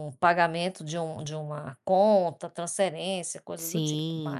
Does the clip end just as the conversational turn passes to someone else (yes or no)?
yes